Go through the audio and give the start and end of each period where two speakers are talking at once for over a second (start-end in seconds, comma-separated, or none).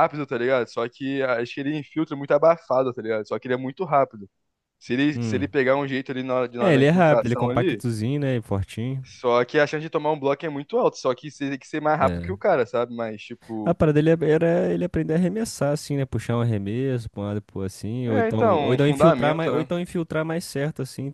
6.6-7.8, 18.1-19.7